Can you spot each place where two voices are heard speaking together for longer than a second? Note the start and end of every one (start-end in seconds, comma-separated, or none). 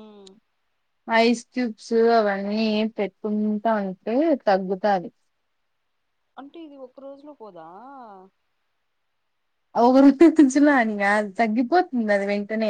none